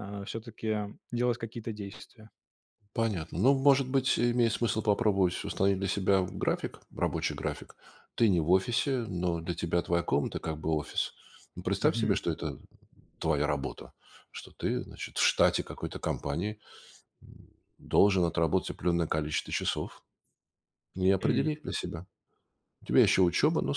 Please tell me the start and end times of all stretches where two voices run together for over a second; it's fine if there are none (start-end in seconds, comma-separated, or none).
none